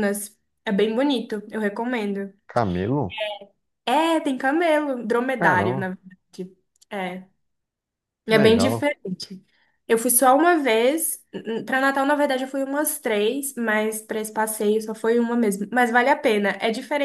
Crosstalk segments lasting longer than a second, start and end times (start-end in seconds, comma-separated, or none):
none